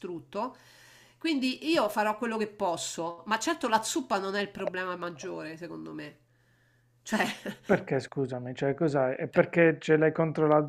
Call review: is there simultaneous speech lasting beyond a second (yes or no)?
no